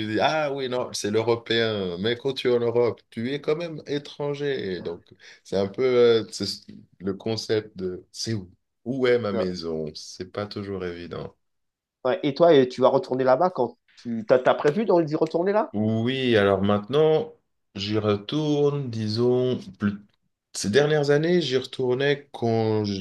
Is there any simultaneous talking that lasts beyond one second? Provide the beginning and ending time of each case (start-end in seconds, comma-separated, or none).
none